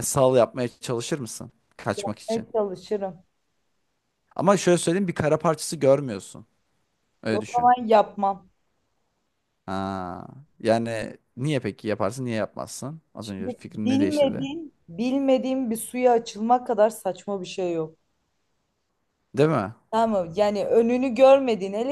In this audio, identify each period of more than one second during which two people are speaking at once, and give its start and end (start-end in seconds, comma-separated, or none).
13.2-14.5